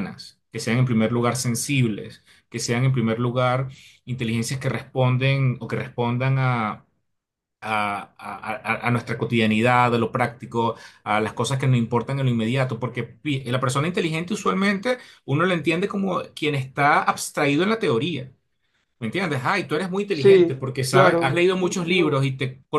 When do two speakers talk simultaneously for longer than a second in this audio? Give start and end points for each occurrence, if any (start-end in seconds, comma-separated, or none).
20.1-22.2